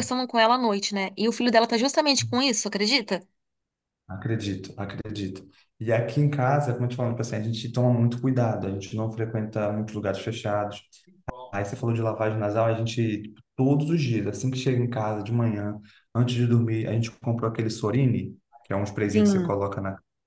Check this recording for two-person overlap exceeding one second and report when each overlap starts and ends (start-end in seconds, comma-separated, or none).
none